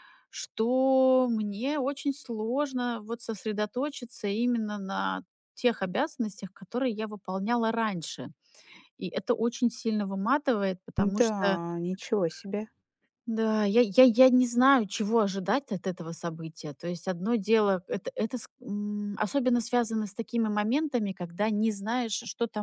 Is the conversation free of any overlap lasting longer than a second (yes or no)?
yes